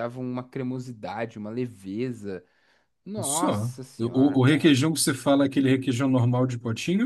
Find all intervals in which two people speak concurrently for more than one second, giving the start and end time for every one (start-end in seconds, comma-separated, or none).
3.2-4.8